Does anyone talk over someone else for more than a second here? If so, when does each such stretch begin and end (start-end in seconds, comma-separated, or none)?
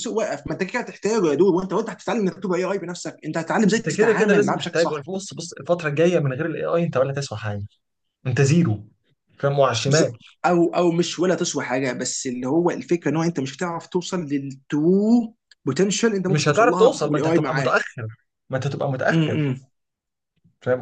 3.7-5.1, 16.3-17.8